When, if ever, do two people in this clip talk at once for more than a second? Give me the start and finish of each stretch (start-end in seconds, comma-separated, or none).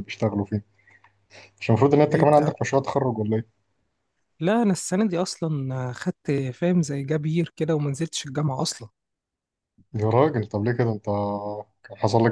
none